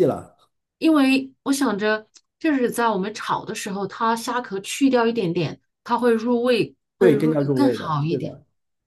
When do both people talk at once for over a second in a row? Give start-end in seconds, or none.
7.0-8.3